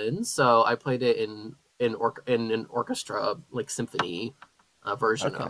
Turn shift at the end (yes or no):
yes